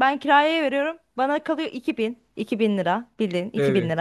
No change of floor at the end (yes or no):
yes